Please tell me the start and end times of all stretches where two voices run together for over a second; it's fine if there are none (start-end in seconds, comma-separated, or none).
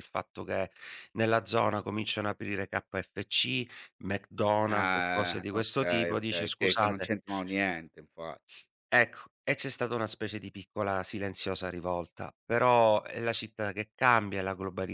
4.7-7.1